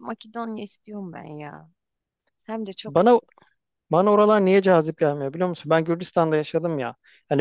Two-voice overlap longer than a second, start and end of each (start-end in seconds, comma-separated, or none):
none